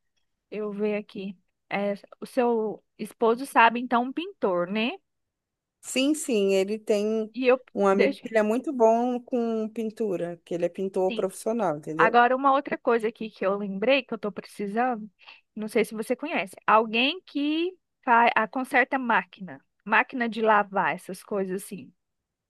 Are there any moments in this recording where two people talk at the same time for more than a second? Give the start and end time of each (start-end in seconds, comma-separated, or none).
none